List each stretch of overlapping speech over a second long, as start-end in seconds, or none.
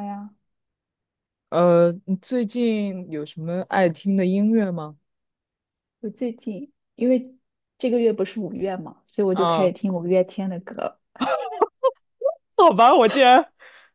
none